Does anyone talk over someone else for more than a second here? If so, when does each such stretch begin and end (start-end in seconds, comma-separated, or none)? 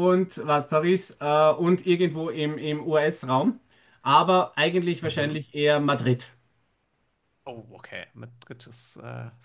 none